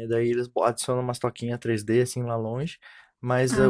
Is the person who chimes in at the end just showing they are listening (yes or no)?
yes